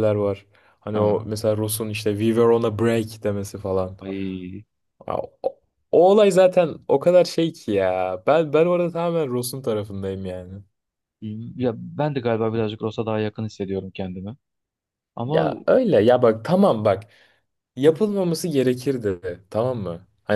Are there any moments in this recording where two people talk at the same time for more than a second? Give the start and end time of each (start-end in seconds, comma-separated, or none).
none